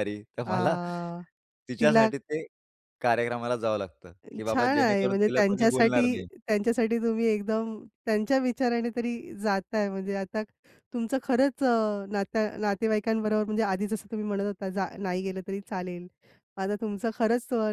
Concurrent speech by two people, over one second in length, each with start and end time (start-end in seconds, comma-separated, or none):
4.5-6.3